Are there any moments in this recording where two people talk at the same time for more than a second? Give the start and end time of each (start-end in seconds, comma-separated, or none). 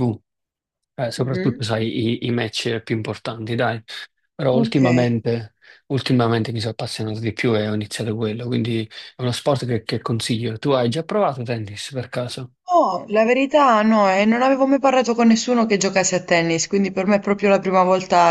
none